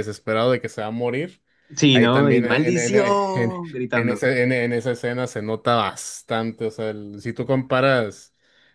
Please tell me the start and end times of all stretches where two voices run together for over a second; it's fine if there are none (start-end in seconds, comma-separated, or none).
1.9-4.2